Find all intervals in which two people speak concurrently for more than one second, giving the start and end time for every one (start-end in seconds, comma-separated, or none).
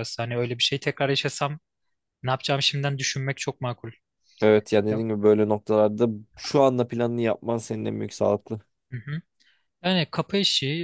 none